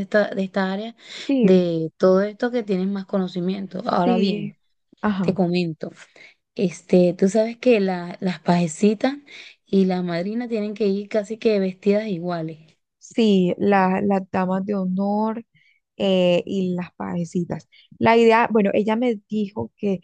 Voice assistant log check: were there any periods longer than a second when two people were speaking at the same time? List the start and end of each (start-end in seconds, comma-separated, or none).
none